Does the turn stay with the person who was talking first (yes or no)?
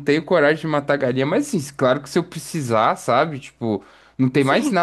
yes